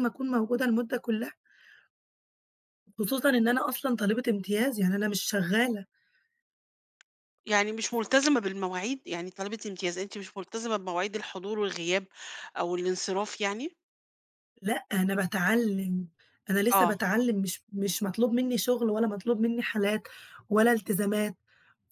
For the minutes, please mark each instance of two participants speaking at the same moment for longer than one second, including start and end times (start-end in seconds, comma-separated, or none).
none